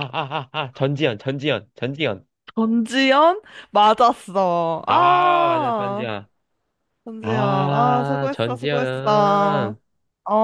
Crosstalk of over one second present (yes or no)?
yes